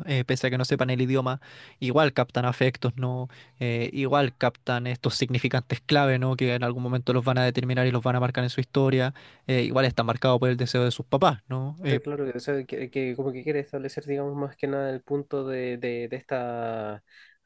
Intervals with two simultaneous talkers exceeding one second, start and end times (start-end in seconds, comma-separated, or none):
none